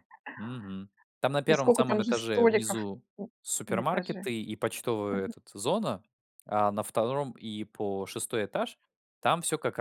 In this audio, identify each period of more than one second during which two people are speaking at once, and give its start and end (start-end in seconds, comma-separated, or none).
1.5-2.8